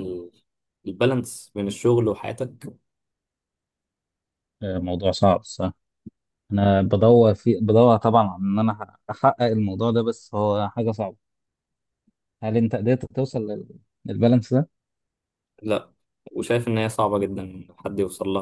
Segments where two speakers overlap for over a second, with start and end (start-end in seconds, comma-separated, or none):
none